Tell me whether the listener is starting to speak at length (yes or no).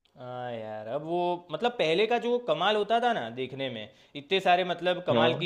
no